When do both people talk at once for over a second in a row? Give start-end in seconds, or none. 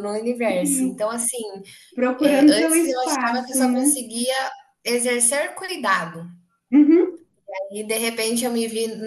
2.2-4.0